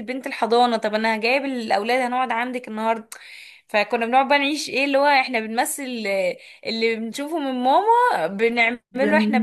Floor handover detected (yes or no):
no